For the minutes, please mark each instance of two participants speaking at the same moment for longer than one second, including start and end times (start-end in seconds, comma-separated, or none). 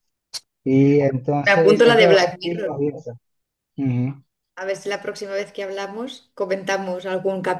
1.4-2.8